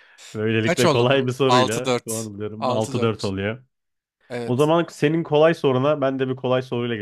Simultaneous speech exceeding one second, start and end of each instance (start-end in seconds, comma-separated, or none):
0.7-3.3